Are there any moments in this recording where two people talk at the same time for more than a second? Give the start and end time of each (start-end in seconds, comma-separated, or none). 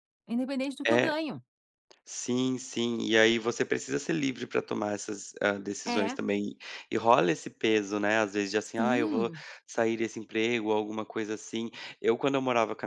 none